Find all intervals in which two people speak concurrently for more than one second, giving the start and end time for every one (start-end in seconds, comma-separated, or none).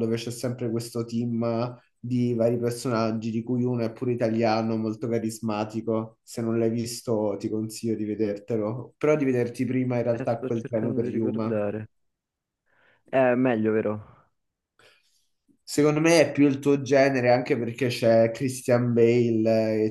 10.1-11.6